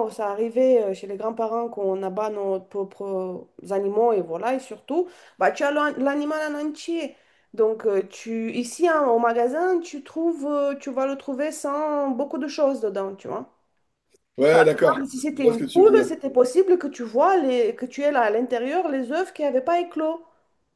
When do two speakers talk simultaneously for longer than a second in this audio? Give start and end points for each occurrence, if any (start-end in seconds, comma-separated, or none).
14.5-16.1